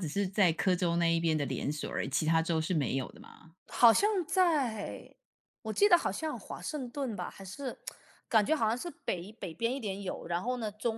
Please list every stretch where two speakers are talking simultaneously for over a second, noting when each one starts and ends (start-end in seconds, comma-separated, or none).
none